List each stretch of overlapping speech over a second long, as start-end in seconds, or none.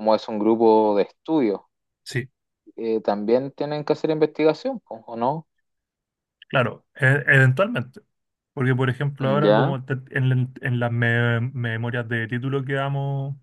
none